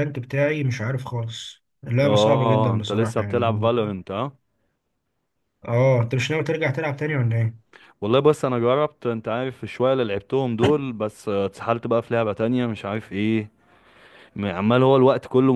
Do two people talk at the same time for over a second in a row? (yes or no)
yes